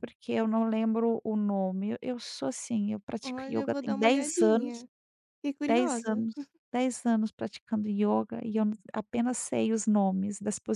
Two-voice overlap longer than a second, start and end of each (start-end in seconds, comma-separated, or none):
3.2-4.8